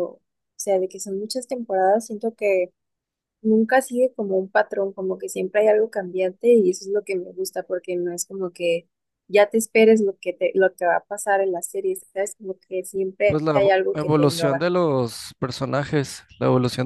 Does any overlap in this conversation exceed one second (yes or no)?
yes